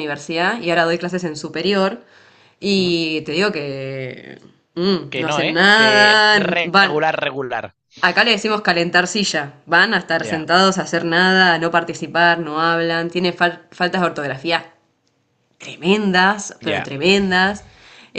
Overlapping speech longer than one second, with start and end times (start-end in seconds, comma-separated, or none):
5.1-7.0